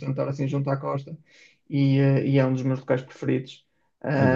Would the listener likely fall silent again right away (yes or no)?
no